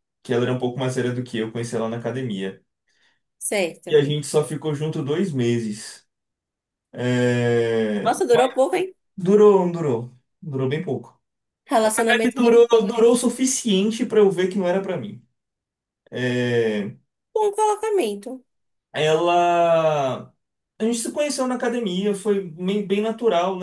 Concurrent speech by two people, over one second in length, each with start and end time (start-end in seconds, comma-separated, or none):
11.8-13.2